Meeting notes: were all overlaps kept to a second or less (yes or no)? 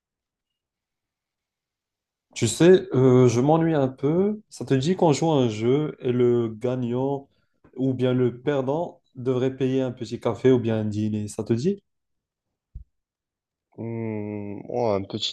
yes